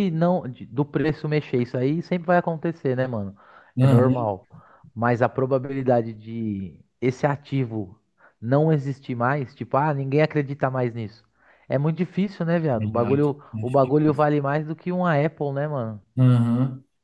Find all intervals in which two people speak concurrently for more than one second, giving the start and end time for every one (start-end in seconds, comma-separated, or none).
12.8-14.3